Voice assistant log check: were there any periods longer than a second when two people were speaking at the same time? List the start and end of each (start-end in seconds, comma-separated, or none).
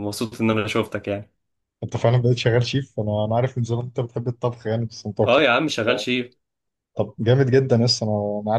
none